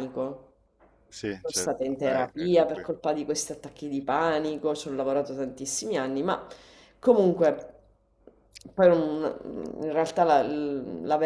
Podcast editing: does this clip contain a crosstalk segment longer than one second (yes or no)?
yes